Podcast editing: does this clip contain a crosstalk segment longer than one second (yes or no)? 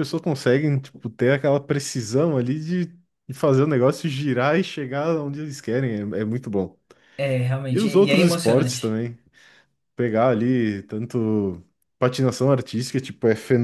yes